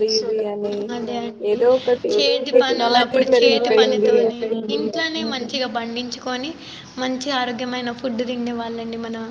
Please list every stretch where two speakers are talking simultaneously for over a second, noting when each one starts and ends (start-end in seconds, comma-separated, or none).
2.5-4.1